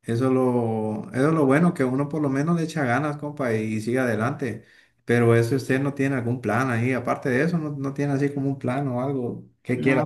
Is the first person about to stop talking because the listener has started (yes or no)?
yes